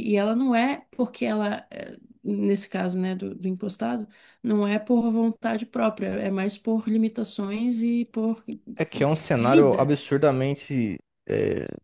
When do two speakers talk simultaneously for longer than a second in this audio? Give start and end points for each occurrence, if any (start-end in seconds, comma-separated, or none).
none